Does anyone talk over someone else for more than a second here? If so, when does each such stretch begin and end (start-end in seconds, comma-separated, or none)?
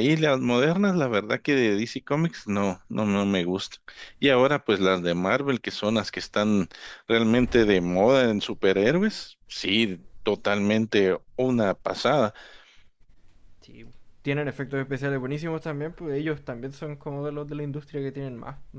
none